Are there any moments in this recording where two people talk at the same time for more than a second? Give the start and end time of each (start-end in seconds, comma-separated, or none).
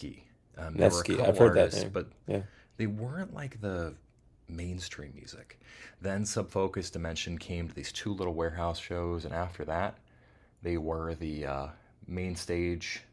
0.7-2.1